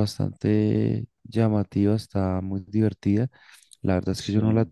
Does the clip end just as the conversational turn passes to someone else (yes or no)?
no